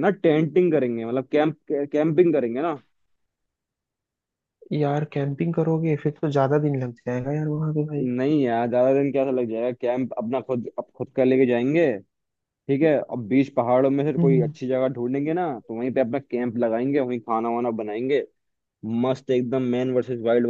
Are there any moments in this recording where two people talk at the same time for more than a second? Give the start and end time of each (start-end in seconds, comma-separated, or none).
none